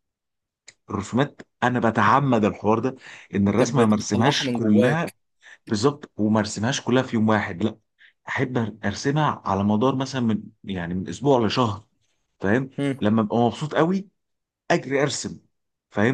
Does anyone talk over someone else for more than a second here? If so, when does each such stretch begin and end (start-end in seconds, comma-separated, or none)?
3.5-5.1